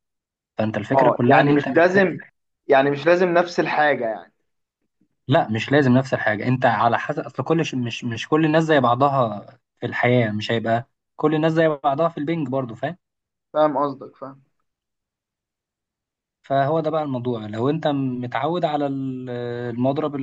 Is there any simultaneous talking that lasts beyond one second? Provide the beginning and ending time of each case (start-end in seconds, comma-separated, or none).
0.9-2.2